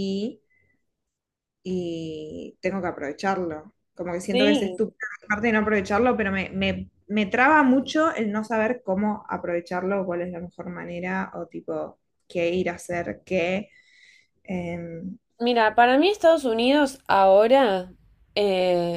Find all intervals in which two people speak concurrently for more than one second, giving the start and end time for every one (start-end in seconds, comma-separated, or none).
none